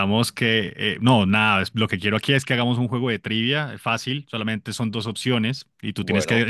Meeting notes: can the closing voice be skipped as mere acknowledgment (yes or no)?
yes